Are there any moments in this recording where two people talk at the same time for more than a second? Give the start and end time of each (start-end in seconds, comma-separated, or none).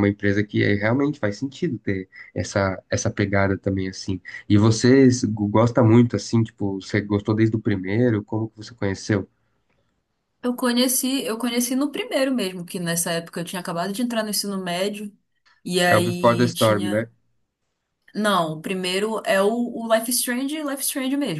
15.9-17.1